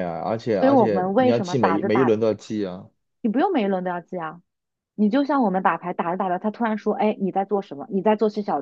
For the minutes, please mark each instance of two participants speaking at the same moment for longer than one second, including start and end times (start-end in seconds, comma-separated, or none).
0.5-2.1